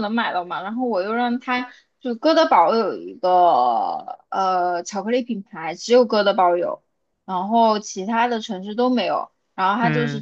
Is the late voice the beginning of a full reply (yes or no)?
no